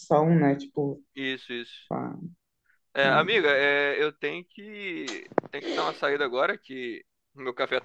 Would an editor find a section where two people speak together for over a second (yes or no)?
no